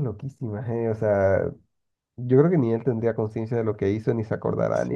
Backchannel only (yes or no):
no